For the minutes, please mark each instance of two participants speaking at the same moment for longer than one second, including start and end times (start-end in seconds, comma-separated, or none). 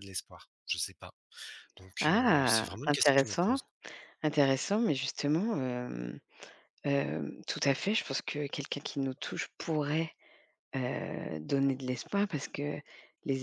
2.0-3.6